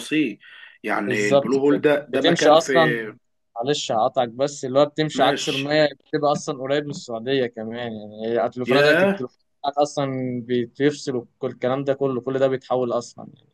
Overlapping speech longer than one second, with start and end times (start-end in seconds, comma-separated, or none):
1.1-3.0